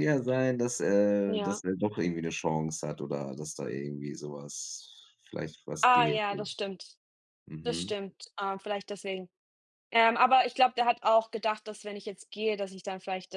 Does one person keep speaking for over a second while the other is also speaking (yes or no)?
no